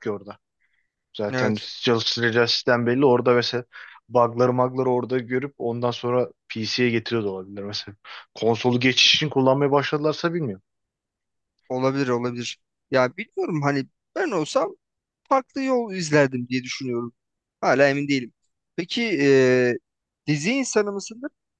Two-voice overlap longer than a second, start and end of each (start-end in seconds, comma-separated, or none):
none